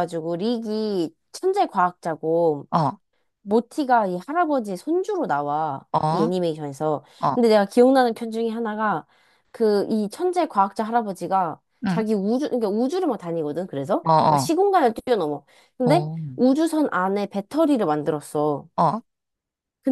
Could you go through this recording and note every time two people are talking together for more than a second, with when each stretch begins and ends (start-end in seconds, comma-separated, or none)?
none